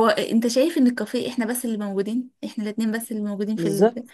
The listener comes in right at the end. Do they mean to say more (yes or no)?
yes